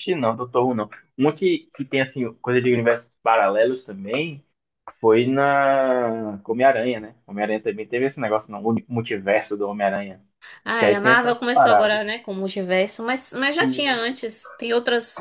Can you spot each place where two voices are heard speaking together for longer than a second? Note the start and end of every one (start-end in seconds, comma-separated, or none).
10.8-12.0